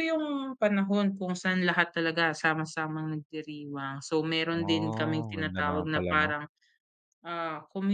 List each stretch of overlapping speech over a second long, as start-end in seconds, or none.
4.6-6.3